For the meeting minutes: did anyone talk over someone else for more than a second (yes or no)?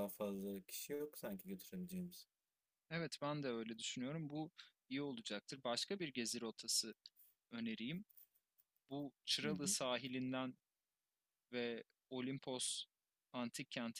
no